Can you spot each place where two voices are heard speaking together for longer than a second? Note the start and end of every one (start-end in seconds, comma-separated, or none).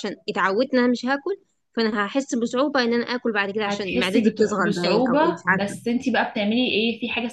3.6-5.8